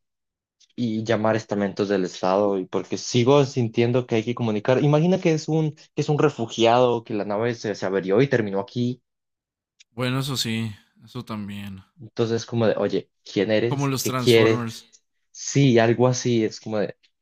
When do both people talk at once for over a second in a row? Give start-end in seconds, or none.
13.7-14.9